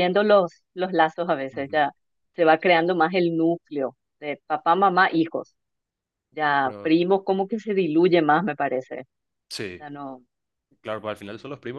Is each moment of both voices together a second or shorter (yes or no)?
yes